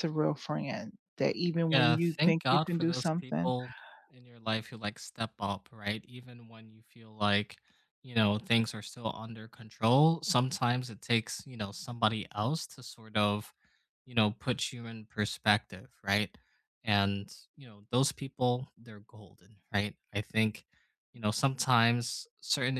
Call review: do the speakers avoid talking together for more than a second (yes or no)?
no